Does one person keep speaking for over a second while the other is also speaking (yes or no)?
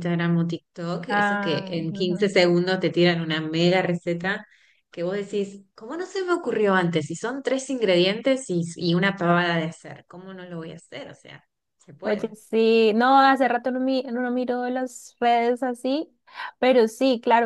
yes